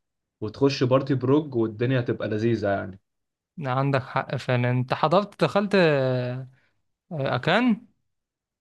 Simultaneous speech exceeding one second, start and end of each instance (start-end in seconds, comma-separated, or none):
none